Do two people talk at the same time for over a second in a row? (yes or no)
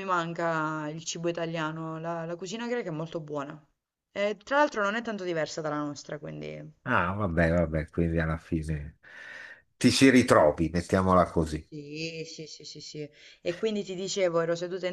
no